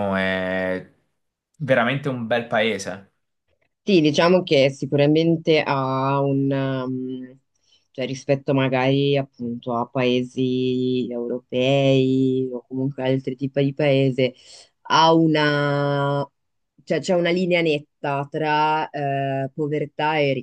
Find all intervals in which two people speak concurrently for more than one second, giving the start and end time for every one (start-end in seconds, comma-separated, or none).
none